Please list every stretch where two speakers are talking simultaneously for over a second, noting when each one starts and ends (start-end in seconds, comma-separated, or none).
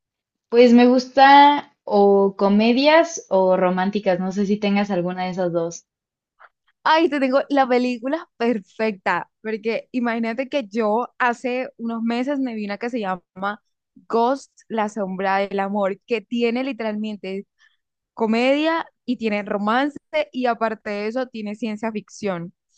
none